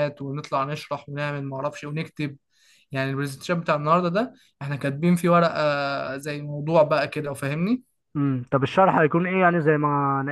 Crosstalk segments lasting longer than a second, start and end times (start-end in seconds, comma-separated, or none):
none